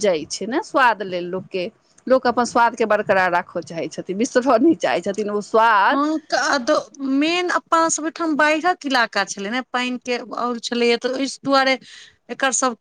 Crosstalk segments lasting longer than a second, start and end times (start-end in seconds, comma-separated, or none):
none